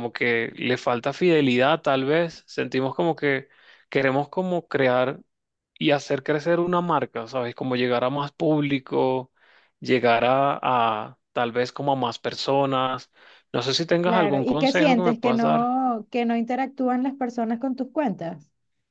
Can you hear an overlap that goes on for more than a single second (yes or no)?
yes